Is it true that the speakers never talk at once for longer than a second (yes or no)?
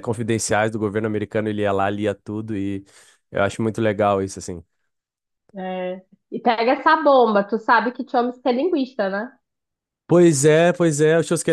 yes